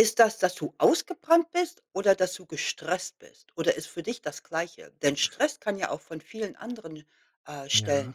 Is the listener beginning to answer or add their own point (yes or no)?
yes